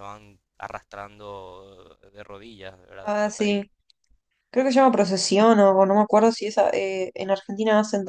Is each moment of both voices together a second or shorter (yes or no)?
yes